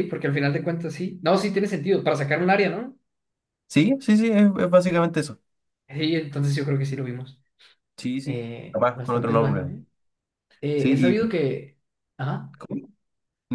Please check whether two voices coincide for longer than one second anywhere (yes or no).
yes